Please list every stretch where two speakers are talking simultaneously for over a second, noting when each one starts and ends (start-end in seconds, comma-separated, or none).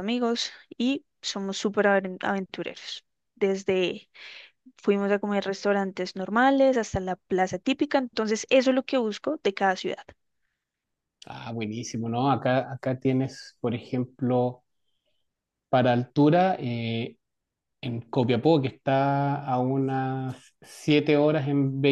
none